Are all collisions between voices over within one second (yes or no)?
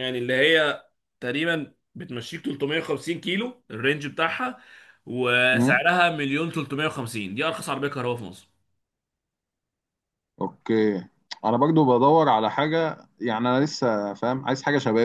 yes